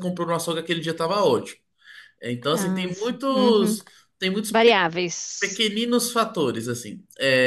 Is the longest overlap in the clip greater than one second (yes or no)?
yes